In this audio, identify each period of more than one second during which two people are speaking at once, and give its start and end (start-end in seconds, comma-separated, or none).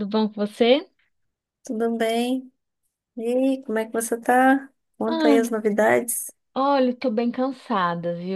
none